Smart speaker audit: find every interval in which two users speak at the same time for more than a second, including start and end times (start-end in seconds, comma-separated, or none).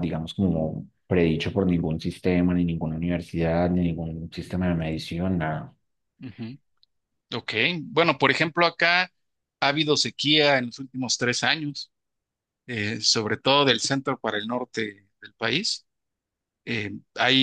none